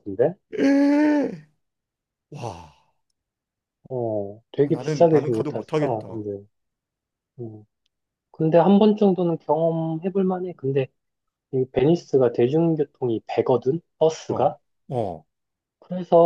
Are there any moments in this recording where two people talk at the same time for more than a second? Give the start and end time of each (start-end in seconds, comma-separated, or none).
4.6-6.2